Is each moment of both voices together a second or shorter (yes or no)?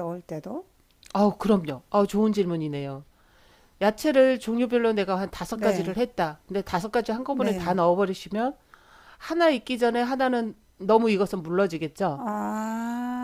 yes